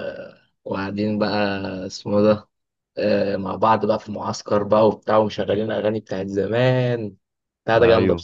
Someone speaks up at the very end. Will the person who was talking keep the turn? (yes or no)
no